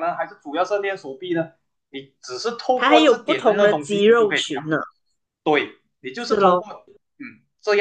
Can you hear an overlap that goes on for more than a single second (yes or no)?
yes